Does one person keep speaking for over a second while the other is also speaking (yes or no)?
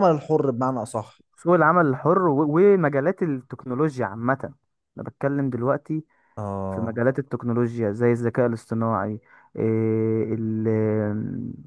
no